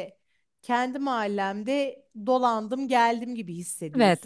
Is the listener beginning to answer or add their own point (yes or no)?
yes